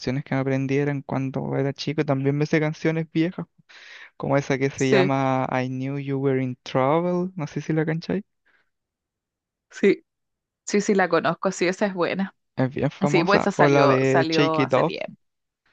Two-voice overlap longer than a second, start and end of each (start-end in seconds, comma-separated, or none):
13.1-14.9